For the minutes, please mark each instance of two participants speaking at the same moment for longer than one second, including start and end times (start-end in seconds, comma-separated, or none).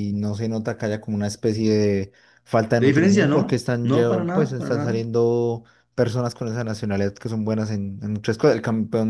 2.8-5.0